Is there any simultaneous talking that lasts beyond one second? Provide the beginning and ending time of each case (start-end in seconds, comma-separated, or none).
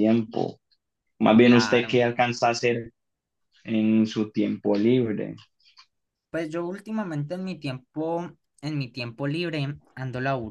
none